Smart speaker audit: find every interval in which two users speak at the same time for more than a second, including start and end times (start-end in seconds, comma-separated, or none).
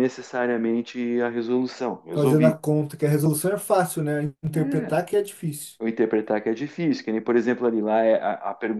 none